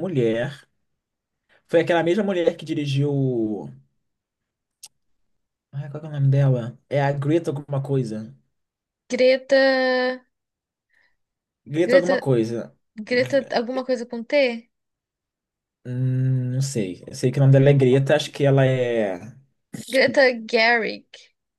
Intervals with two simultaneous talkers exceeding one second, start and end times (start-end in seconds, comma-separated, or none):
none